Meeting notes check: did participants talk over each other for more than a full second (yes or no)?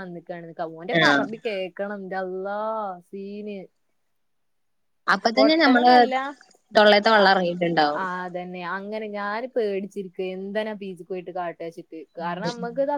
no